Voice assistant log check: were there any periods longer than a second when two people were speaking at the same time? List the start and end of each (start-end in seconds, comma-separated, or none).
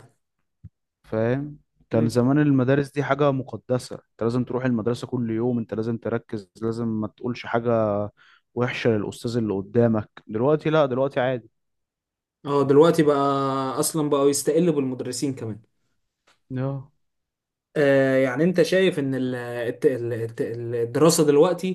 none